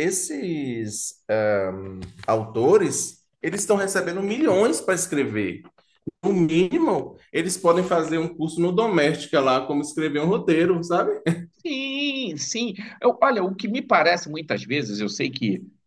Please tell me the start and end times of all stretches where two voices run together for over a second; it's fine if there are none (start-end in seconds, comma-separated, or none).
none